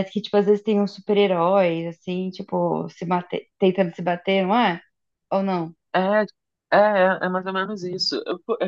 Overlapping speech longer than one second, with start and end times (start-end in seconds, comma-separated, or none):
none